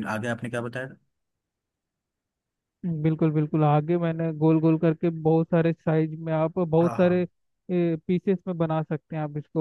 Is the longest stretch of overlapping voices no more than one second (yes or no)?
yes